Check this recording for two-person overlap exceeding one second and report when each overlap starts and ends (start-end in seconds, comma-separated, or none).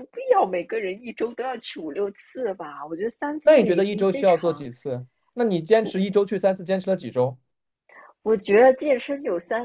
3.4-4.7